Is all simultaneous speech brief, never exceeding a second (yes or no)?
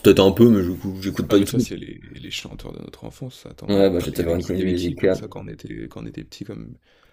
no